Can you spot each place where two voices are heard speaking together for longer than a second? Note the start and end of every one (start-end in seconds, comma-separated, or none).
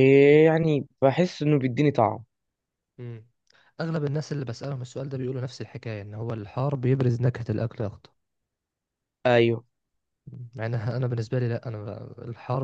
none